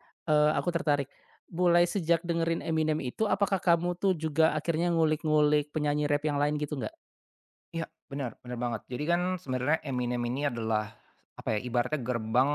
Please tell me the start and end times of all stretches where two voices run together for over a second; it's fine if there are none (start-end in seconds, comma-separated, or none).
none